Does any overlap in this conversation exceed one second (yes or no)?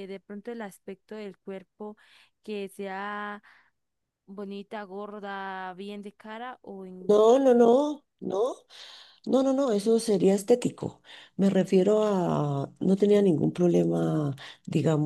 no